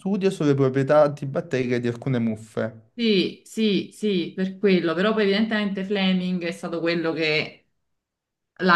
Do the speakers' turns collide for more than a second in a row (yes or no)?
no